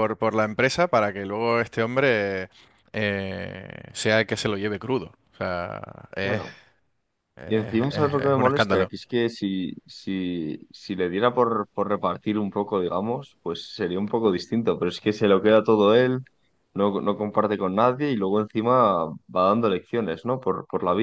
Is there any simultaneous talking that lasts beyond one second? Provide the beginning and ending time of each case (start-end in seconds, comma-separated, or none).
7.5-8.9